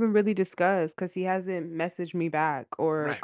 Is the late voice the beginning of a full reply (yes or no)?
yes